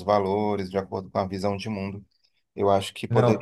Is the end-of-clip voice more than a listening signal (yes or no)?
no